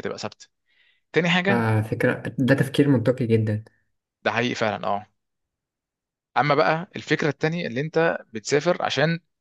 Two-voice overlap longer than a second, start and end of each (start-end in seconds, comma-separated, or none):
none